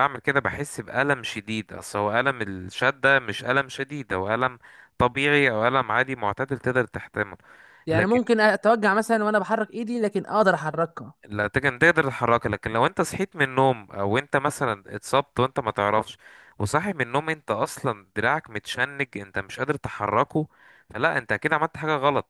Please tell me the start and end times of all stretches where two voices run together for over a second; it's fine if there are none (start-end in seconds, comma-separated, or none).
none